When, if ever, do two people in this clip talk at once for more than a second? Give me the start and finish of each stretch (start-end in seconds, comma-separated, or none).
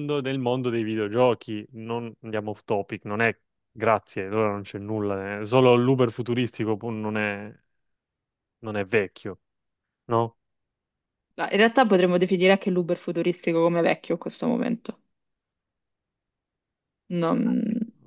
none